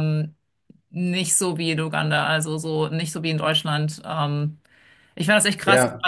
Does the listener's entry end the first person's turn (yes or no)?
no